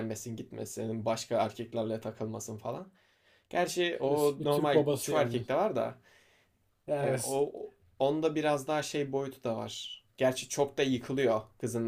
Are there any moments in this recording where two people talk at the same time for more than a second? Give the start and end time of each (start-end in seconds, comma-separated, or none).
4.0-5.4